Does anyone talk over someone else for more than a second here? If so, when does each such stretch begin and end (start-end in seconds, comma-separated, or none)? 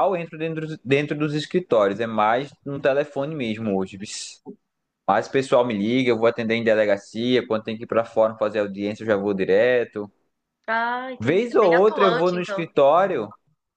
11.2-12.6